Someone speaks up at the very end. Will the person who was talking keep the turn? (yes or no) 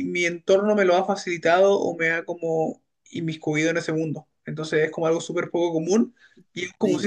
no